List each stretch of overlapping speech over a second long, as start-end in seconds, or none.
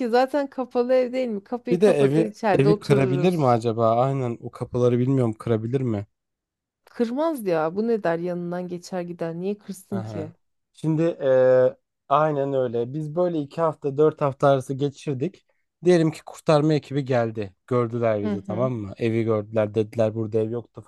1.7-3.6